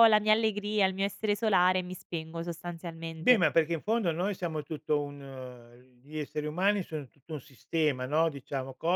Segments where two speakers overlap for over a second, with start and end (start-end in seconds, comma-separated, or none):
none